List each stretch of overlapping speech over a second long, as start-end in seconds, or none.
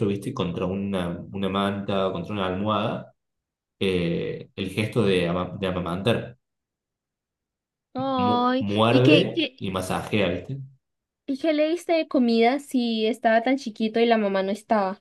8.2-9.6